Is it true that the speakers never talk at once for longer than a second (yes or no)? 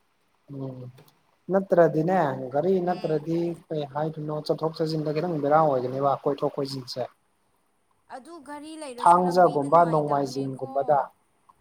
no